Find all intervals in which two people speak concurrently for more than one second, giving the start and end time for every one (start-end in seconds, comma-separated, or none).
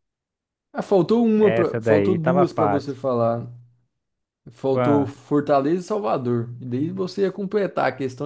1.4-3.0